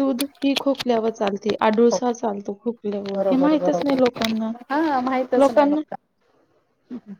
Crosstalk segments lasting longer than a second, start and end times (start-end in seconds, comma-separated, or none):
3.1-4.5